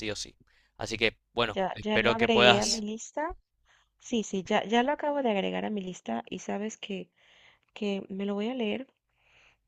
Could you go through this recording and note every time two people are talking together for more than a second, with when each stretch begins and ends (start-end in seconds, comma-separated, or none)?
1.5-2.8